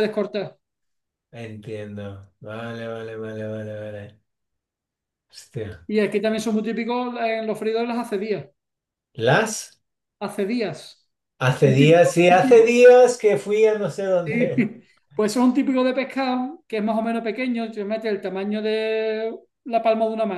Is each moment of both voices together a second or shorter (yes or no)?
no